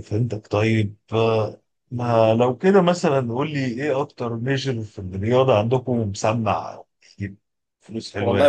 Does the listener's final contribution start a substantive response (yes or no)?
yes